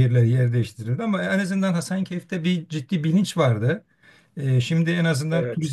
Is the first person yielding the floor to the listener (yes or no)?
no